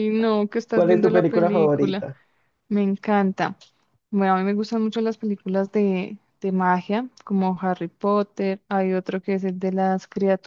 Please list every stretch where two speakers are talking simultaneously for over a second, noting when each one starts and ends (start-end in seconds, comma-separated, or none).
0.7-2.1